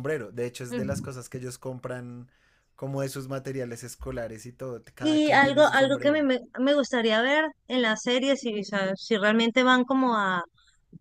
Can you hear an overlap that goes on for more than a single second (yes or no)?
yes